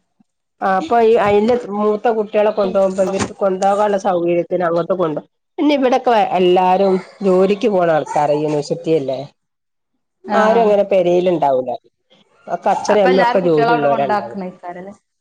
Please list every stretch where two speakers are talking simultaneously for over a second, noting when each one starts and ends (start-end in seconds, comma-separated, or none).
12.9-14.4